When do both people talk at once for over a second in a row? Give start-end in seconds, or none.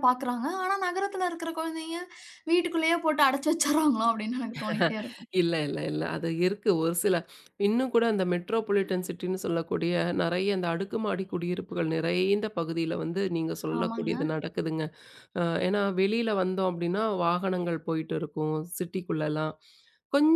none